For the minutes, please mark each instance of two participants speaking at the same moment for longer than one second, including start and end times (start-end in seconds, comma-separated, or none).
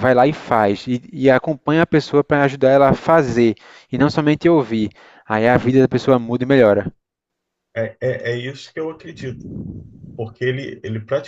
none